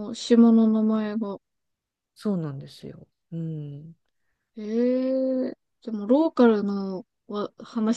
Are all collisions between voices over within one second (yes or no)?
yes